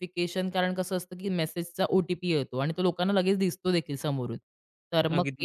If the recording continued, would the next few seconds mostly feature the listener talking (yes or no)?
no